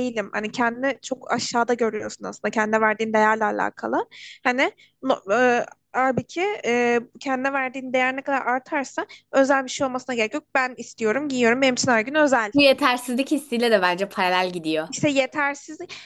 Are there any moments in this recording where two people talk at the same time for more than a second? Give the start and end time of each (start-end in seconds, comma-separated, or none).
none